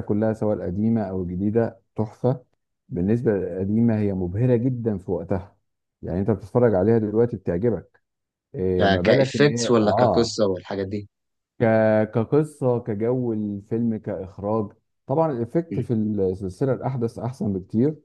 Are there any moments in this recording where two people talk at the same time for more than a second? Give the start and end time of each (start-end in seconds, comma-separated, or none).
8.8-10.4